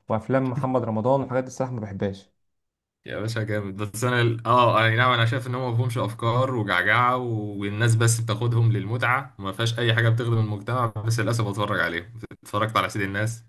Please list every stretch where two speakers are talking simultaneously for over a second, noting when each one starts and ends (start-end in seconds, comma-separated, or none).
none